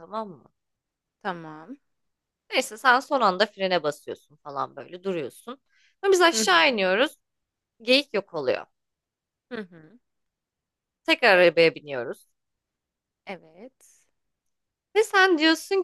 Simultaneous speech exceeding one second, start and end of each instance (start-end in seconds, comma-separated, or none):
none